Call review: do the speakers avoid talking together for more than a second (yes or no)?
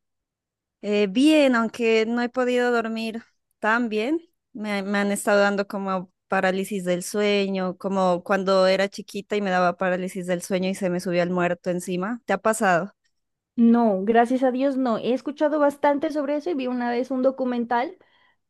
yes